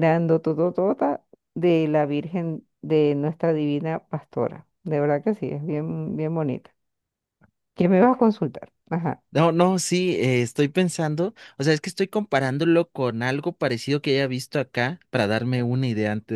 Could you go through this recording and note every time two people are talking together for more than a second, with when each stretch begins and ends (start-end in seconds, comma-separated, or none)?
none